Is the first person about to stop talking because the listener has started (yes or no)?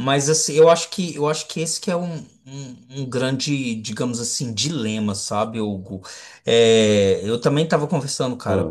no